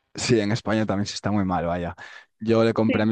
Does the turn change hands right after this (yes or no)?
no